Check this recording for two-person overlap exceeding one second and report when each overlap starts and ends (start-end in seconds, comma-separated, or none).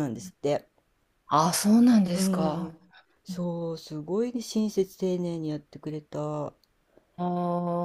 none